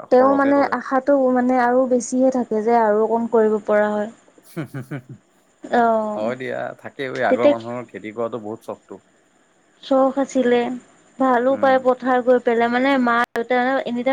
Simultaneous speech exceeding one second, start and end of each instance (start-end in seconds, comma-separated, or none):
none